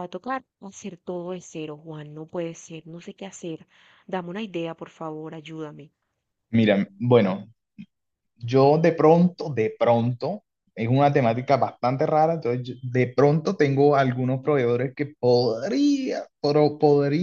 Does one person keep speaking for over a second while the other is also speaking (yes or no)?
no